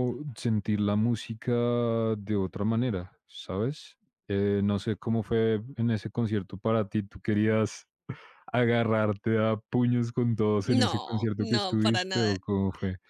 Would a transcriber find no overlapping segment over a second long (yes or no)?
no